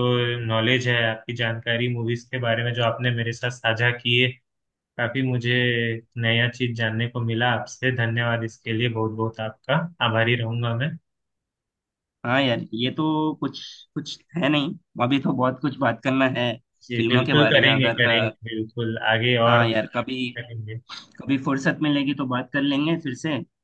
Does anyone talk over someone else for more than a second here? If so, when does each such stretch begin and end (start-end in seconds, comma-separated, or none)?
17.0-18.3